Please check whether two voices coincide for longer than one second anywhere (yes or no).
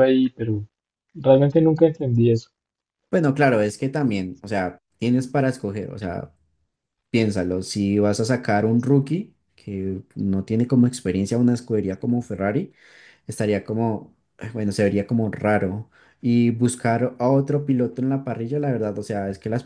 no